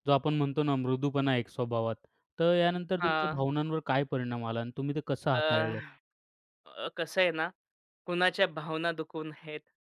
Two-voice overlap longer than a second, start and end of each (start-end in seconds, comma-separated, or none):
none